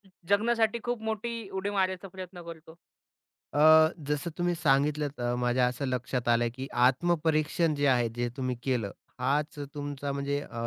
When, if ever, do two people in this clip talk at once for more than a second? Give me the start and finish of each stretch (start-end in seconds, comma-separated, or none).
none